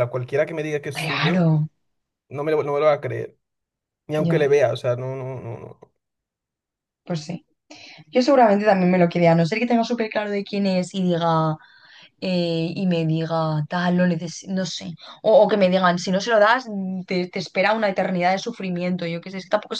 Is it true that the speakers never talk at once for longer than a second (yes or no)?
yes